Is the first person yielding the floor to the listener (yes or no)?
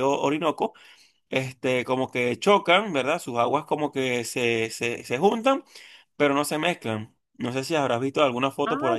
yes